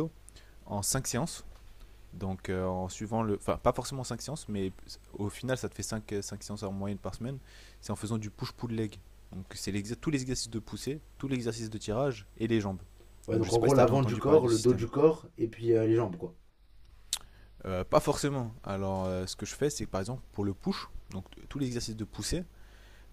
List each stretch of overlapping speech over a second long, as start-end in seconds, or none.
13.3-14.9